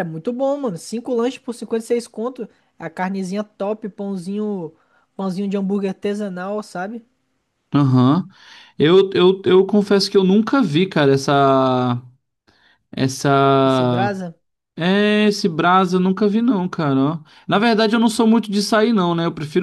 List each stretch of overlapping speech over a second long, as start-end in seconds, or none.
none